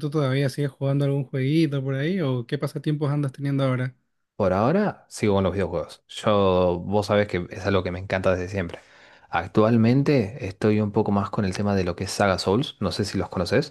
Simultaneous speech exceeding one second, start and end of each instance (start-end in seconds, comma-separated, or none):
none